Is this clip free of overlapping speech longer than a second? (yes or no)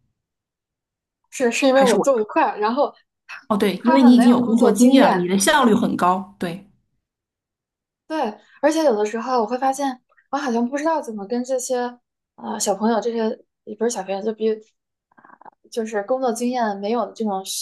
no